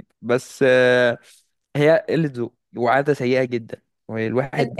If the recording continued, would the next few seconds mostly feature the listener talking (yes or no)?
yes